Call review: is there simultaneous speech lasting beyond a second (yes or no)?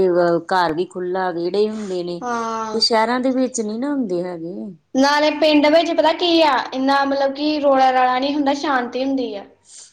no